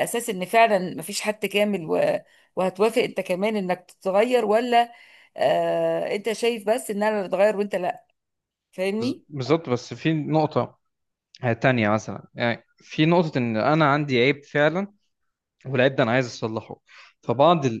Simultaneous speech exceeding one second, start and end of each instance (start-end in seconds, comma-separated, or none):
none